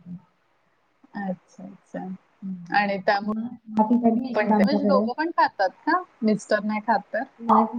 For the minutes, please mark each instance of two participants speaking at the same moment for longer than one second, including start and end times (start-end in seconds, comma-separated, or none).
3.3-5.0